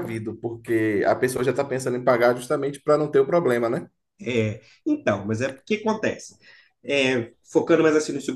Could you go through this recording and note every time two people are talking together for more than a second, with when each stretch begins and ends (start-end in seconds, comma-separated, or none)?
none